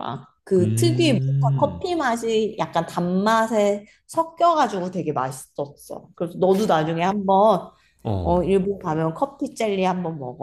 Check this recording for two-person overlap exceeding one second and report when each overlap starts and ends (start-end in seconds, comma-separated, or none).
0.6-1.8